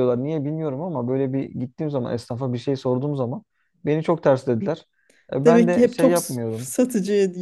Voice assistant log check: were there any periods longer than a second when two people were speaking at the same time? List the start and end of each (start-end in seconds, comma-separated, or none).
5.4-6.7